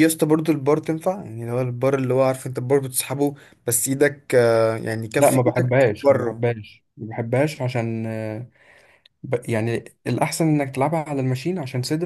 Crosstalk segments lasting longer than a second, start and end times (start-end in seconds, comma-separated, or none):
5.2-6.5